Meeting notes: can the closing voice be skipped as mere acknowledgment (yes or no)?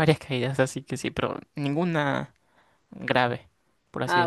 no